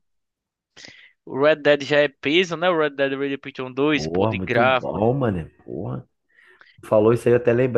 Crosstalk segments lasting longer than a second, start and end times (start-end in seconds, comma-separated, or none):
3.9-5.5